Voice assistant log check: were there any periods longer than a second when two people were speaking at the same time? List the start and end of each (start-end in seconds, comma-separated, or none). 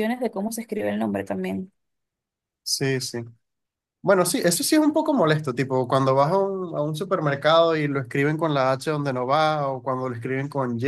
none